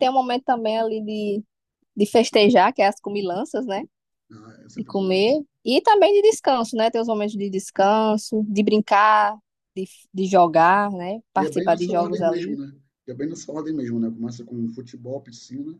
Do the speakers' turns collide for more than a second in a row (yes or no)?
yes